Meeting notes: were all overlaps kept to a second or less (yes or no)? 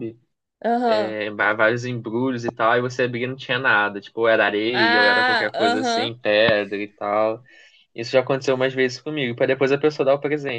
no